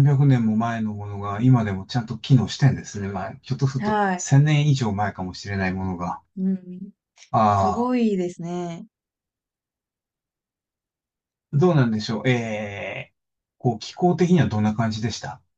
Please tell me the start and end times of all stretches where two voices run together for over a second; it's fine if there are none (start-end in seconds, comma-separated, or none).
none